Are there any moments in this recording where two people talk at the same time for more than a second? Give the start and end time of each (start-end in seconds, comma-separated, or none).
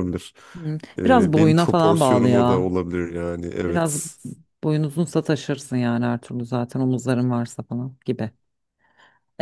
1.0-2.7